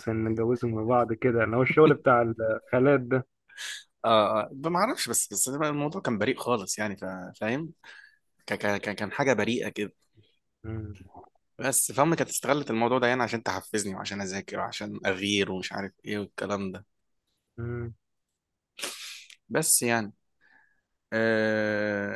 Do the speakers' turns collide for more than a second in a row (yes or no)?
no